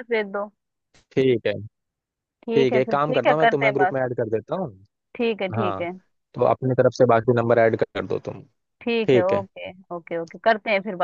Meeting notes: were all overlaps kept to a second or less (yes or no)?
no